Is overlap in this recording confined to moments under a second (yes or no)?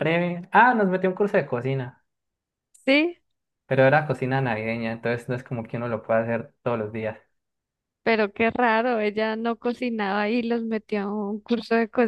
yes